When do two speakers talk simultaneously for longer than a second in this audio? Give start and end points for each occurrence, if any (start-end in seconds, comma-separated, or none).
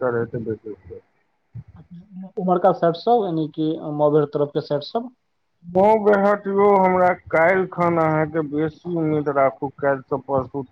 none